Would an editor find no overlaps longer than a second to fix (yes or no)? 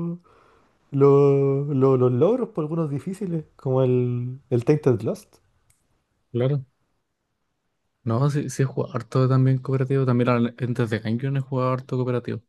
yes